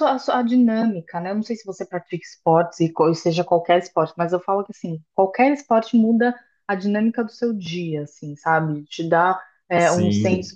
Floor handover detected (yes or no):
no